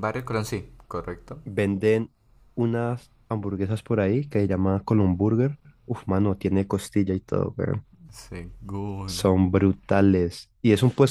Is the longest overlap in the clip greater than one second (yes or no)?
no